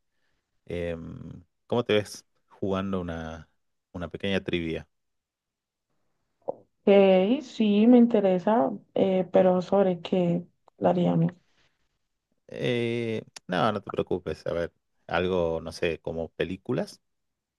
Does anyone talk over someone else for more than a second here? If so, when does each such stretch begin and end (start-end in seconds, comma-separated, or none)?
none